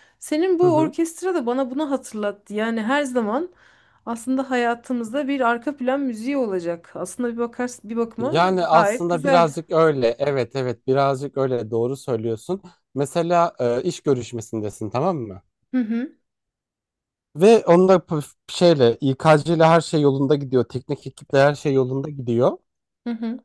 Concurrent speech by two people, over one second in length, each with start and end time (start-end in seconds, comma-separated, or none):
8.2-9.5